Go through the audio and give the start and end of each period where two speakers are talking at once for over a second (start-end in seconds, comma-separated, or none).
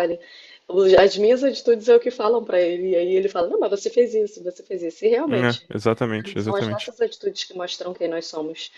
none